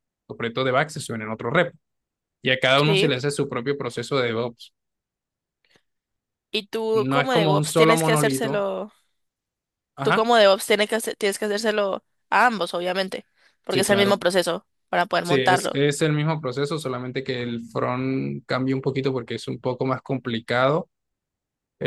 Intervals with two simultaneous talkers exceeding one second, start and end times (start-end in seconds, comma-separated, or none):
6.9-8.6